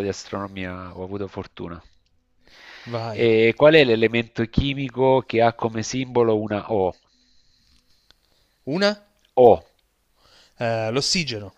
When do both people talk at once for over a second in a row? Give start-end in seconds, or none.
none